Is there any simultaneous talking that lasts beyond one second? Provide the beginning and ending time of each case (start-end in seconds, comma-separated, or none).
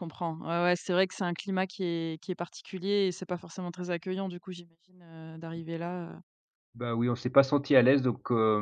none